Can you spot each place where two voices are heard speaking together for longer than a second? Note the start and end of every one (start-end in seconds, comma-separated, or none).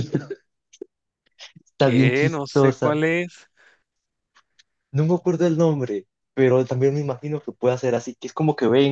1.8-3.0